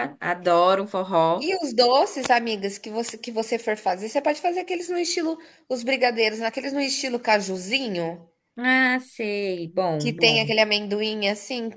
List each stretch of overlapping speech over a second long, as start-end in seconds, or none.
none